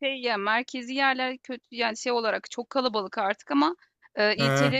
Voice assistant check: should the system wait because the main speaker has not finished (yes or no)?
yes